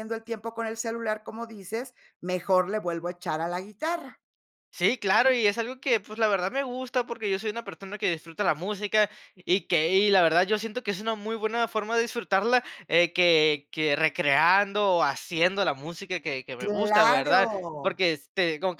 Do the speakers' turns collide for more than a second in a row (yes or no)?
yes